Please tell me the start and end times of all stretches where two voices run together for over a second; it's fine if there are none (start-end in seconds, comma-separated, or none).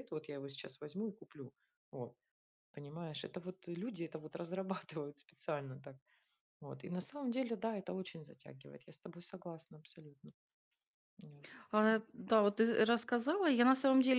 none